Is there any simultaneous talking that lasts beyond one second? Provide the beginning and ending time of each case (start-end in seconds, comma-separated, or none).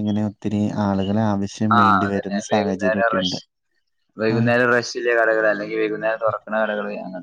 1.8-3.4